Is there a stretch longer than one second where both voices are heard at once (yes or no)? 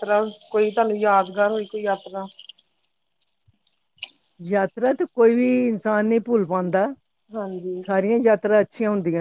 no